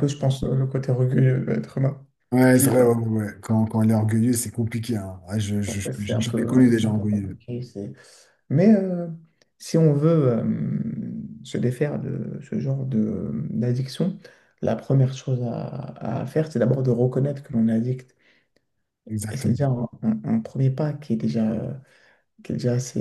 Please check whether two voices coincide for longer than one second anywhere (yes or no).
yes